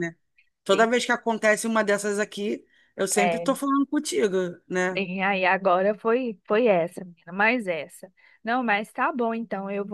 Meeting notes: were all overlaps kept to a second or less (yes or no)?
yes